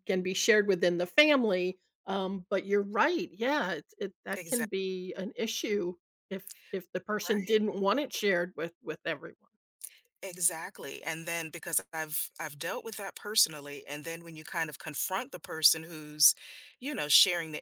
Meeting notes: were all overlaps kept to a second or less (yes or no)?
yes